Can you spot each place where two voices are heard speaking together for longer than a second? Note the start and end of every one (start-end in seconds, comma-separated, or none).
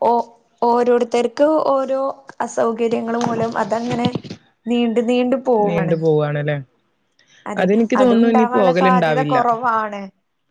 7.6-9.4